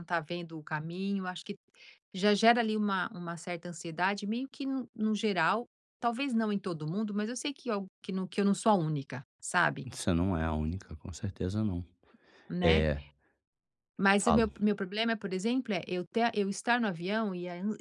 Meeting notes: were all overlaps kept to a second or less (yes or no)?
yes